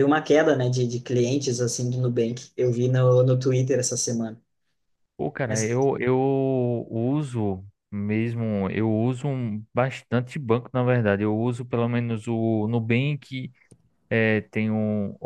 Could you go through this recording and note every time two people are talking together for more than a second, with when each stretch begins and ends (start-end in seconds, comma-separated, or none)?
none